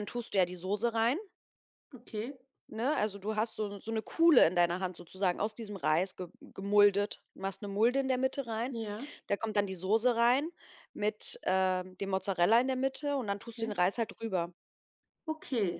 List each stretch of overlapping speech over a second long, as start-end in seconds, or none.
none